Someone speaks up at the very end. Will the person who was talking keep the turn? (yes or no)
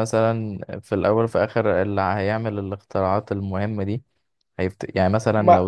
no